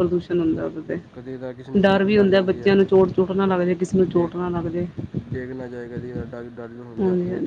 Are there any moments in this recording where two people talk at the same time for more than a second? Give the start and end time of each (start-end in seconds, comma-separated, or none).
1.1-2.7